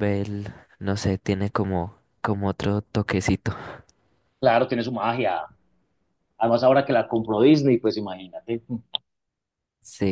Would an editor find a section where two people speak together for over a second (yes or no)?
no